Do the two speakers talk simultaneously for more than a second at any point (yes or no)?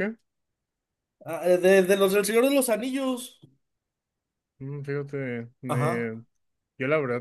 no